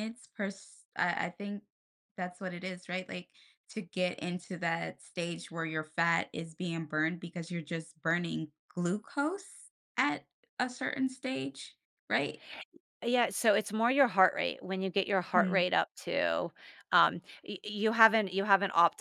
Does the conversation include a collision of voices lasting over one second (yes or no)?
no